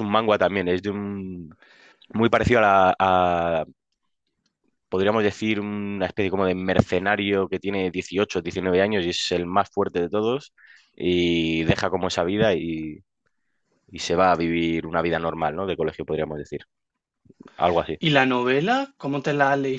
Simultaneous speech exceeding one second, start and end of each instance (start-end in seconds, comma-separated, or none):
none